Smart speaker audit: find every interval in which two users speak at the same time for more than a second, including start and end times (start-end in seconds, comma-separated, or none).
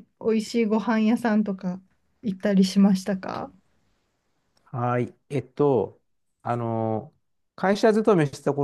none